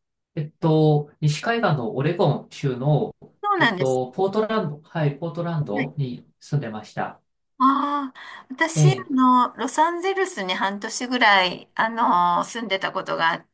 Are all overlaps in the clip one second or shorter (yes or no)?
yes